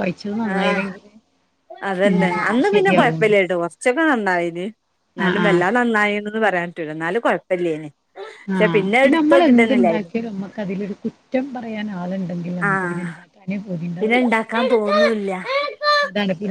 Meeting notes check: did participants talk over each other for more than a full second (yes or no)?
no